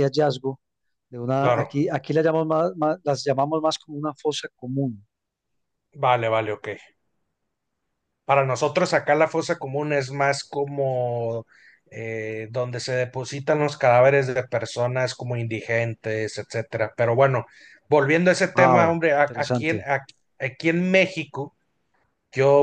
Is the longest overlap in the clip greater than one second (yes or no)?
yes